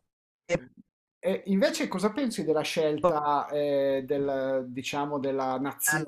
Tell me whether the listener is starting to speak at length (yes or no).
no